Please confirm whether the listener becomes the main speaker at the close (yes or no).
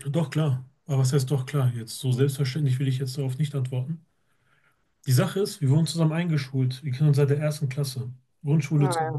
no